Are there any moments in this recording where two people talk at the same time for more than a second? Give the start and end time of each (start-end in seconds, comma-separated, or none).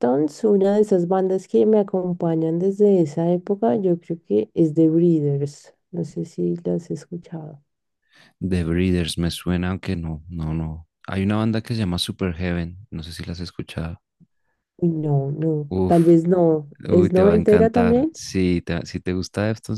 16.9-18.1